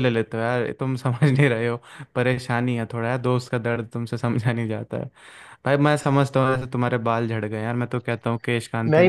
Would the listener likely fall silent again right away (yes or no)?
no